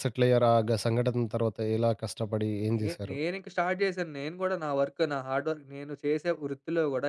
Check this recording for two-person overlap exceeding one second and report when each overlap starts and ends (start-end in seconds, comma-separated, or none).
none